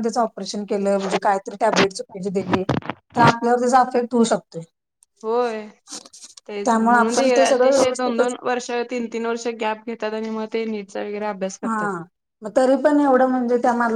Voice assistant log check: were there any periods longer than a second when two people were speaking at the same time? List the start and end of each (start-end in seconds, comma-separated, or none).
6.6-8.3